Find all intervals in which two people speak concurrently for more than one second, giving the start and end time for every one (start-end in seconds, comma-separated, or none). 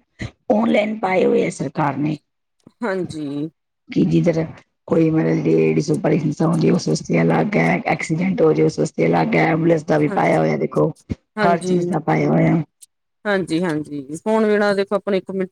none